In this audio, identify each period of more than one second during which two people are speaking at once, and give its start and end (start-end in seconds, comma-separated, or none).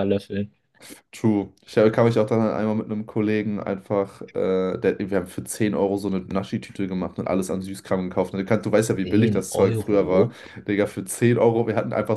9.0-10.3